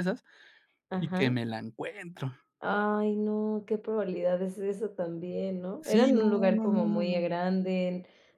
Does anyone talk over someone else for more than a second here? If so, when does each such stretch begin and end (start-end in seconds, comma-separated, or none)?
5.8-7.2